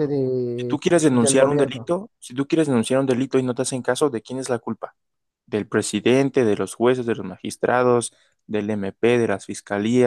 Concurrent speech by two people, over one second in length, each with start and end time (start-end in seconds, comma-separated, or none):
0.6-1.9